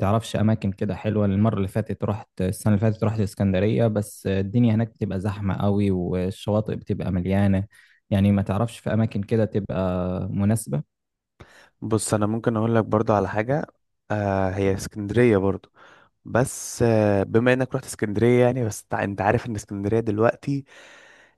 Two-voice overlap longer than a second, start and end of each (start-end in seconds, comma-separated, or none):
none